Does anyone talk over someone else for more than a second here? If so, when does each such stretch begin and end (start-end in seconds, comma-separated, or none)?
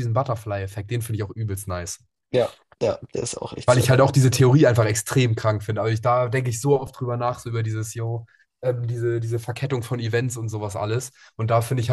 none